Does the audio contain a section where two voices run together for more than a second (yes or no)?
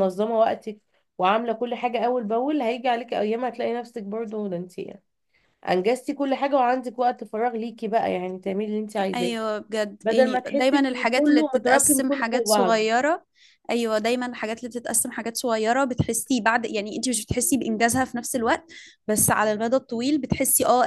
yes